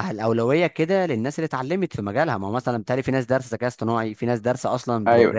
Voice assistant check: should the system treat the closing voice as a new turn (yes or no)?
yes